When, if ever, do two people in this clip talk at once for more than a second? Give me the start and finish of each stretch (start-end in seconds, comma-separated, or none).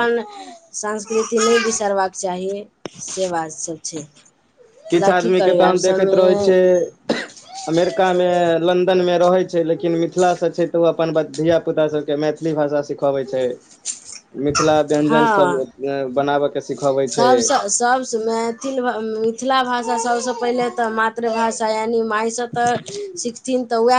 4.9-6.5